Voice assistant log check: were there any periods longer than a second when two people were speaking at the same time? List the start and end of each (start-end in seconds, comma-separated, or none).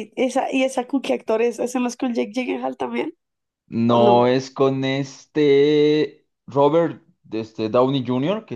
none